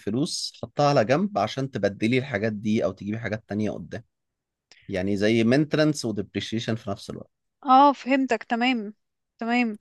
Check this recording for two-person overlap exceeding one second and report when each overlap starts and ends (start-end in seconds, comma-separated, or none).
none